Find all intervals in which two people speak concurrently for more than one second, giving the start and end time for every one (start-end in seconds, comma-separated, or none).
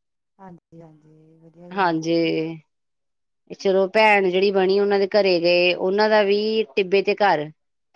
none